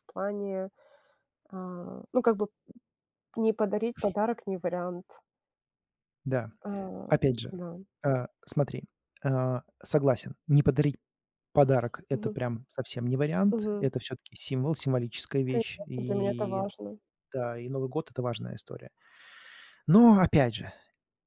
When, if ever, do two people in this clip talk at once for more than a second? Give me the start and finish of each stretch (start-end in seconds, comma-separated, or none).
15.4-16.7